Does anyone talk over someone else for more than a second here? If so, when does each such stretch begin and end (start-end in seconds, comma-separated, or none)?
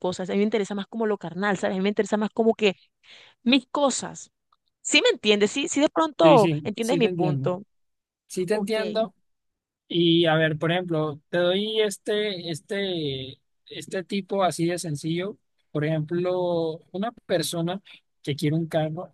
6.2-7.6